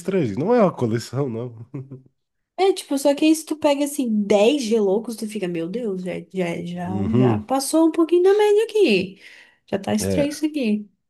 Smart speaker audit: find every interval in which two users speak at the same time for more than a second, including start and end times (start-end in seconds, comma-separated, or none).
none